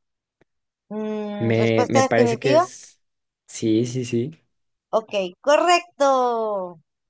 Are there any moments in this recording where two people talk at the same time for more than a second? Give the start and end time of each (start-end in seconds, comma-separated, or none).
1.4-2.7